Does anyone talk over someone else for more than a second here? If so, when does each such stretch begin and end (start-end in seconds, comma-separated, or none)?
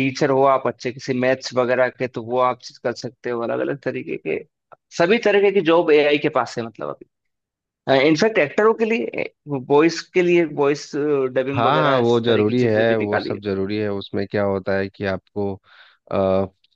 11.6-13.4